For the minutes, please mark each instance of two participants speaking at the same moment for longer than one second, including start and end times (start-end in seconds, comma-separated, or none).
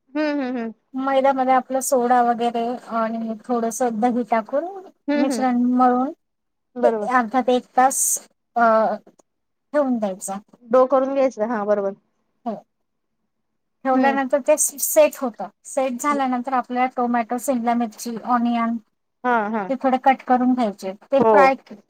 none